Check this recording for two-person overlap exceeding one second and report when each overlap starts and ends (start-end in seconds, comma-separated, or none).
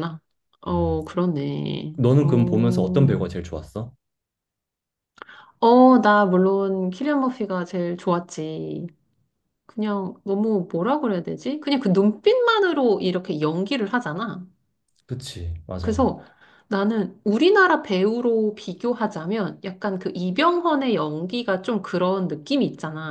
none